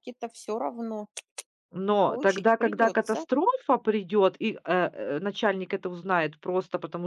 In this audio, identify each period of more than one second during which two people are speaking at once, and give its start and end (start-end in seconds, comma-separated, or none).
2.0-3.2